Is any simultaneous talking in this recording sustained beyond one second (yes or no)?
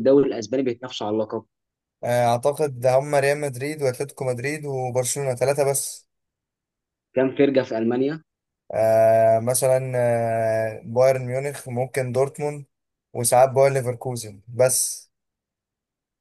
no